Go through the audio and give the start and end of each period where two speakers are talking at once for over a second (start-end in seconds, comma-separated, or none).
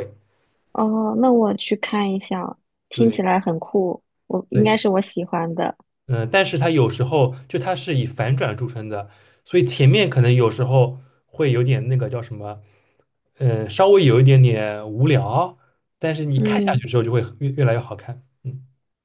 none